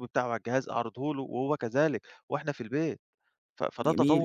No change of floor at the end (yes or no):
no